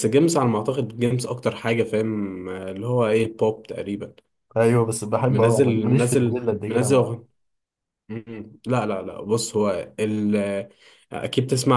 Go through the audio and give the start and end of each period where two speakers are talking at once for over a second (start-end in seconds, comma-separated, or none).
5.3-7.2